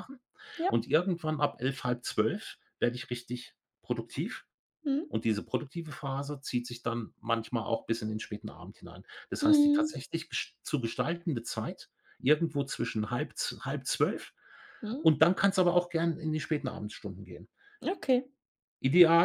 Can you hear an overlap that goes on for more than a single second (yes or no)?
no